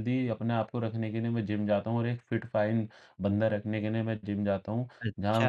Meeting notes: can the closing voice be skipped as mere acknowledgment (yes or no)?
no